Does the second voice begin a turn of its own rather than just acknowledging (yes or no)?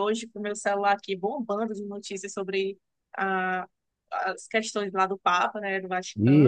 yes